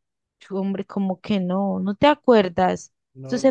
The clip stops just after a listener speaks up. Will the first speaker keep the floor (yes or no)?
yes